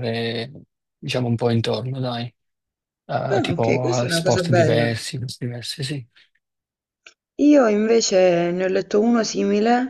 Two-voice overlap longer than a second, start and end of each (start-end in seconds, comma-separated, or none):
3.3-4.9